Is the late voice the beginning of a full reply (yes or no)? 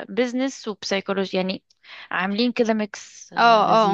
yes